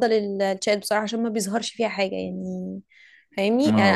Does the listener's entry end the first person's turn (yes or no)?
no